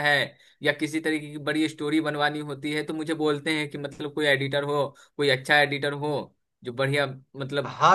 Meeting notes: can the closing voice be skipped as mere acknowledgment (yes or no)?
no